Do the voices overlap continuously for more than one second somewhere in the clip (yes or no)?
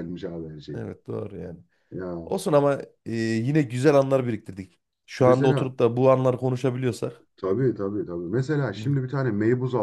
no